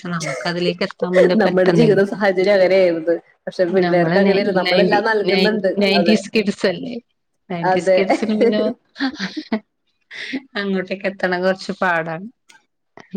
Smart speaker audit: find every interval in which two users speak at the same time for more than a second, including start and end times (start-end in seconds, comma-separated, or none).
3.8-6.2